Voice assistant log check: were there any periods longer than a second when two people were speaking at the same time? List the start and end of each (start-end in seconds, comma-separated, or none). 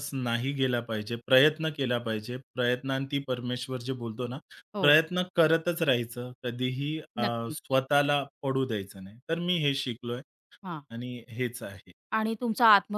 none